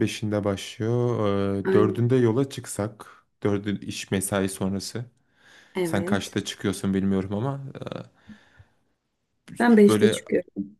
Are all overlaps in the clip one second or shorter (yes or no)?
yes